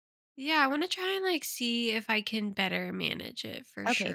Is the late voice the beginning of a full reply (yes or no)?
yes